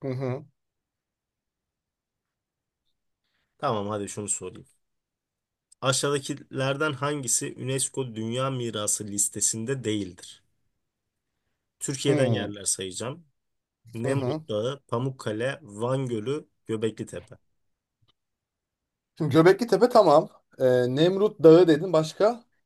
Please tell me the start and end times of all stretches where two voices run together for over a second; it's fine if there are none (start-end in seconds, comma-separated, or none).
none